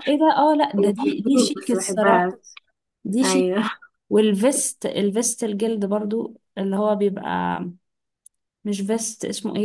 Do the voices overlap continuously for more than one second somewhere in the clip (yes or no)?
yes